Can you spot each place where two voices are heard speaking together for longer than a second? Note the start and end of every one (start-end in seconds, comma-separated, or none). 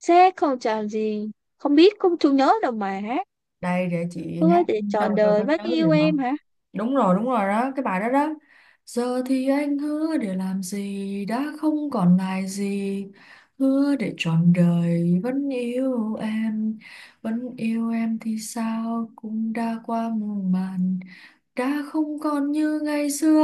4.4-6.2